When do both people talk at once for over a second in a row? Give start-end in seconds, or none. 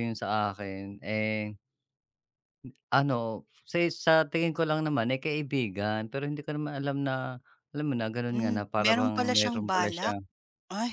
8.3-10.2